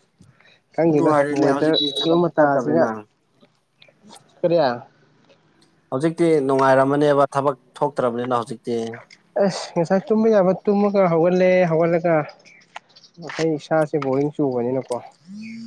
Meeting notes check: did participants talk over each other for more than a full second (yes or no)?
yes